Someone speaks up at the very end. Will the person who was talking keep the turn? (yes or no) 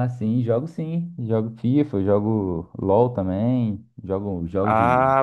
no